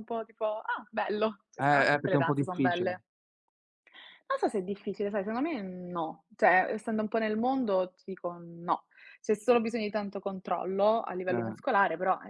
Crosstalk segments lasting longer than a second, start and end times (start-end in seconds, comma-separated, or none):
1.6-2.9